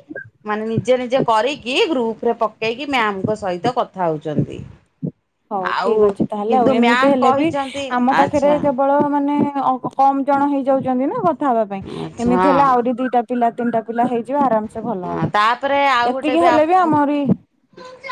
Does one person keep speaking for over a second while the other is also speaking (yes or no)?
no